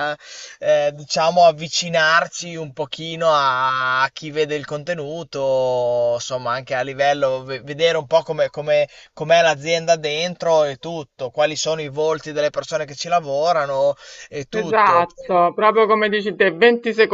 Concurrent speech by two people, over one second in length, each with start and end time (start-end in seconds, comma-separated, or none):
none